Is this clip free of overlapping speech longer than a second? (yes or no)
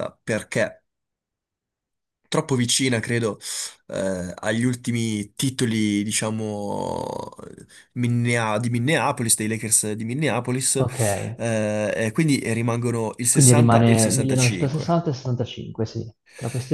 no